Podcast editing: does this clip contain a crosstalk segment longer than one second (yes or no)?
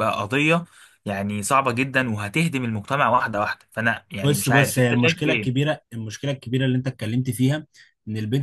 yes